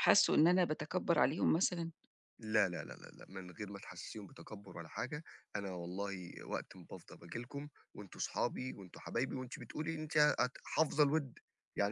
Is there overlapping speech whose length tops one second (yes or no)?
no